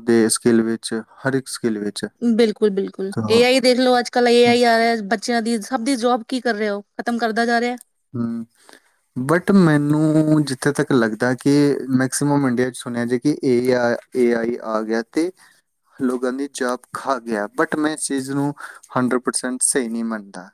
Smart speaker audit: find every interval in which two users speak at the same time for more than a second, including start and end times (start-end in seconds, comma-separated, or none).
none